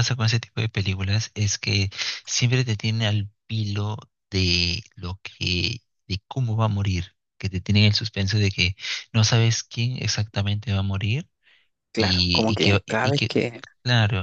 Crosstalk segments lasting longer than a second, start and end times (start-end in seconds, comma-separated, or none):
12.0-13.6